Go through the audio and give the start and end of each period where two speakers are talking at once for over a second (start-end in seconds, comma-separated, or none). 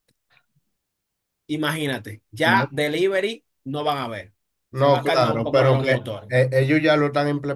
4.7-6.3